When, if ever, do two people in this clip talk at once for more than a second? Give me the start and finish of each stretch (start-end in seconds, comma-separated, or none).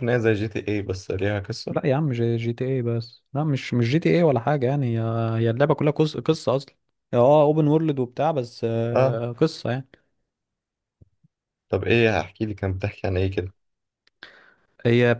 none